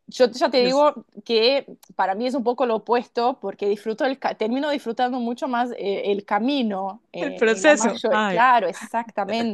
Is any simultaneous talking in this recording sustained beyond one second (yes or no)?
yes